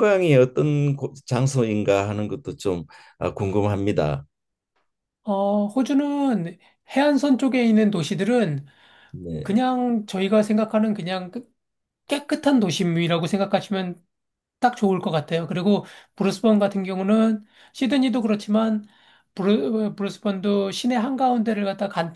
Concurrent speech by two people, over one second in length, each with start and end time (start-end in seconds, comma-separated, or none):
none